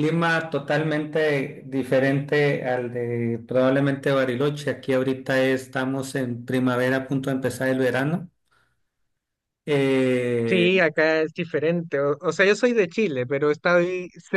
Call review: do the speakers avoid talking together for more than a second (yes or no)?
yes